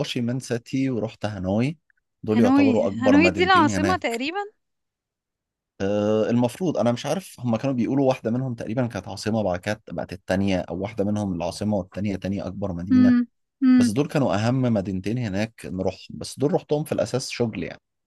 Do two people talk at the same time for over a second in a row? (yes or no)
yes